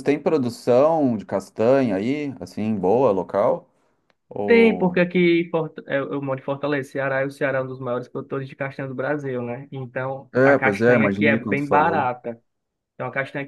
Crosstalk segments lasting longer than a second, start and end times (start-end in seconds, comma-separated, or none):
10.3-12.1